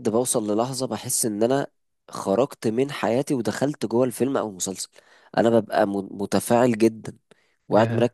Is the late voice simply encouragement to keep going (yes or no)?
yes